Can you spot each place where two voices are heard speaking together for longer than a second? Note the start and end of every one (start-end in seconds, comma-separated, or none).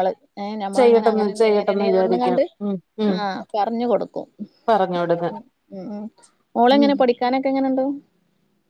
0.8-2.4